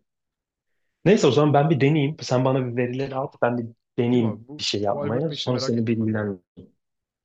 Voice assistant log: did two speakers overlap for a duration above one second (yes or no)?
yes